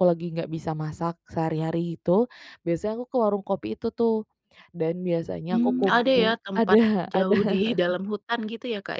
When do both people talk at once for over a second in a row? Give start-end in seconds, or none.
5.5-7.5